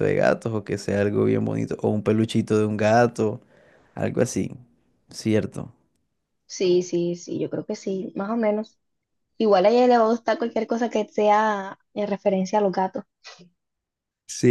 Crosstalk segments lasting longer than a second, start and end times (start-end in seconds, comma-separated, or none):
none